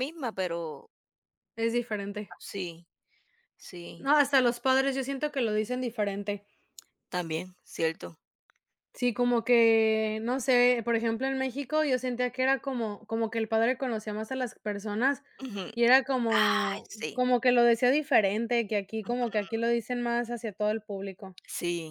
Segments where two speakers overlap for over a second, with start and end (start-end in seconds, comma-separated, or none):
none